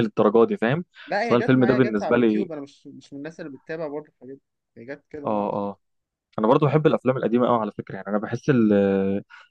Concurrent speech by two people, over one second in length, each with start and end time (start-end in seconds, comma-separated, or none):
1.2-2.5